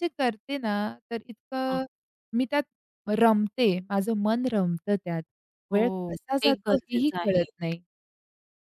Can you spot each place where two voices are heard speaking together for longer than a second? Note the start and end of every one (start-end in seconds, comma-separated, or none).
5.7-7.4